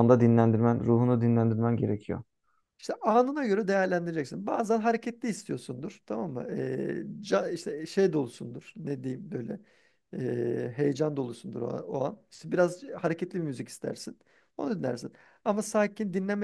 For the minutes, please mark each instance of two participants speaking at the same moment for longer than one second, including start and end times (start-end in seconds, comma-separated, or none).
none